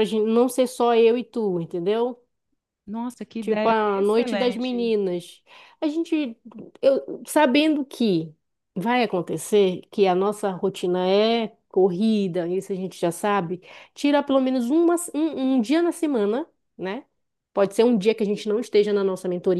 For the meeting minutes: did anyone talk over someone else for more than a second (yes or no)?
yes